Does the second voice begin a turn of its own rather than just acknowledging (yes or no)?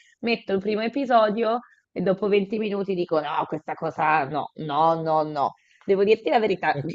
no